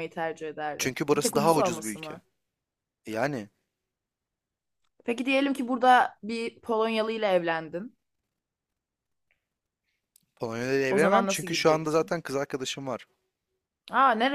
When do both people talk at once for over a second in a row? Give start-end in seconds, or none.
0.8-2.2, 10.9-12.1